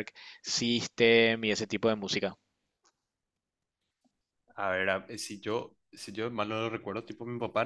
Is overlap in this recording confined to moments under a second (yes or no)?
yes